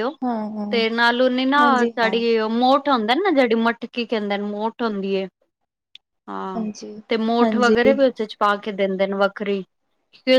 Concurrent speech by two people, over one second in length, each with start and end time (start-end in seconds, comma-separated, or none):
none